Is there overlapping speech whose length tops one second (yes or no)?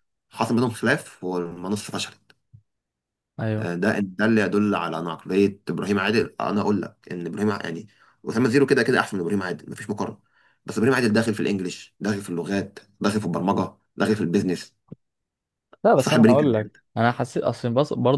no